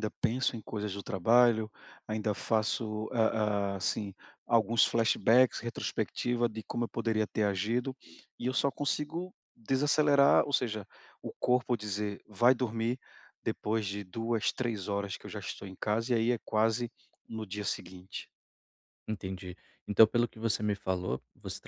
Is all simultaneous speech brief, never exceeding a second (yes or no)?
yes